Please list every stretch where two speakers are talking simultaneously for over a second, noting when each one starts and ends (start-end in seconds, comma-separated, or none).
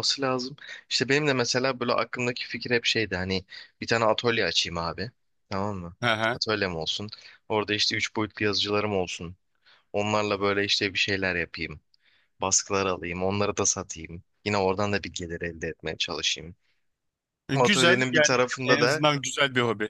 17.5-19.0